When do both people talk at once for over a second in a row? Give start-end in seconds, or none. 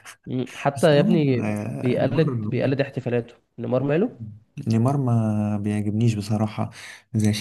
0.8-2.3